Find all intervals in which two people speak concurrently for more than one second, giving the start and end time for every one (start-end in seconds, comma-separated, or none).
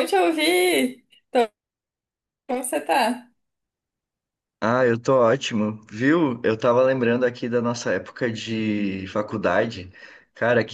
none